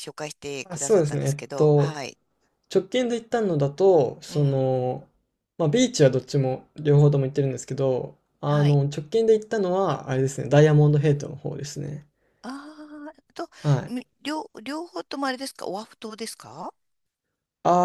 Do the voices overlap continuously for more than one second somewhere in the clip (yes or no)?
yes